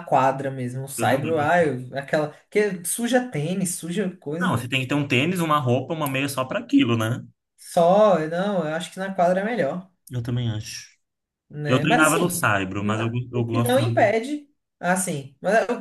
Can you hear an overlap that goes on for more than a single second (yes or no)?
yes